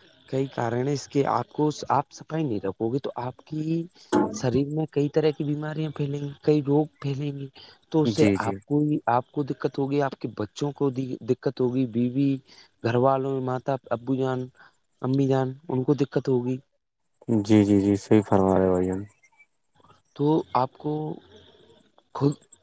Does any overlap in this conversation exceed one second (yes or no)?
no